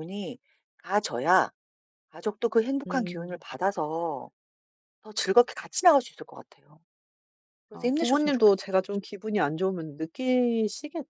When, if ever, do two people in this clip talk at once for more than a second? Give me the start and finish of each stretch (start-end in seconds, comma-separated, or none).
7.7-9.0